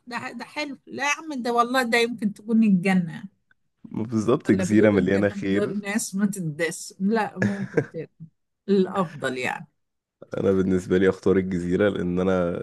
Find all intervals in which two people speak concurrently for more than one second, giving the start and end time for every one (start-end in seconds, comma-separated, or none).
4.5-5.7